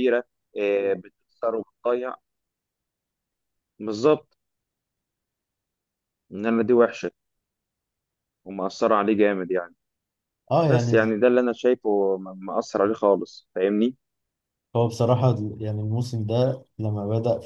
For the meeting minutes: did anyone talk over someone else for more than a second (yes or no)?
no